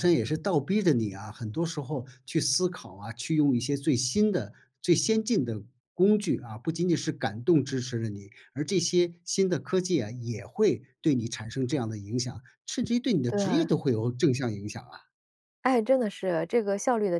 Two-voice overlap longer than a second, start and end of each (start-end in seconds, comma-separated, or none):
none